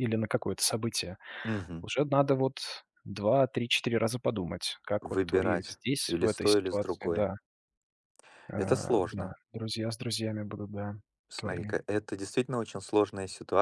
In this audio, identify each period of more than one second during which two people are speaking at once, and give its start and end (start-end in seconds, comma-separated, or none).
5.0-7.2